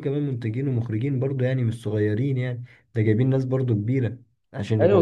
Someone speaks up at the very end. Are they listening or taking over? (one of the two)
taking over